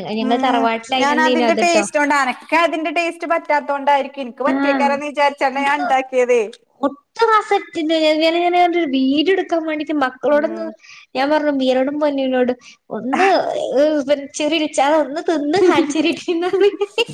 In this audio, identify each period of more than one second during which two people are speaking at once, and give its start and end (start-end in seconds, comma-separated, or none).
none